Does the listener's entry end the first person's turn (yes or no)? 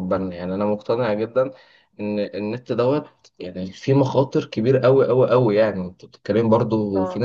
no